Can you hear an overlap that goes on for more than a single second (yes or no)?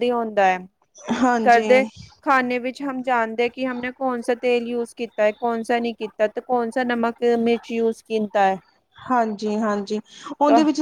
no